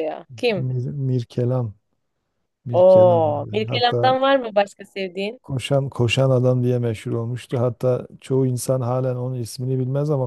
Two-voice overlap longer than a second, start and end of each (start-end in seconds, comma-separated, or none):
2.7-4.1